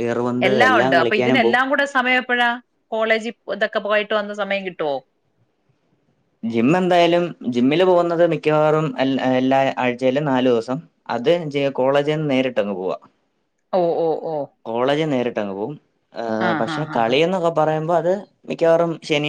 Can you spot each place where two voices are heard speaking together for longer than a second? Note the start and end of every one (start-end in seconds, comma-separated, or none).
none